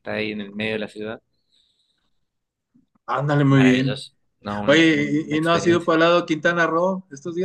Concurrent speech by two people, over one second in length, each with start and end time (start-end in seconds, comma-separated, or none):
4.7-6.0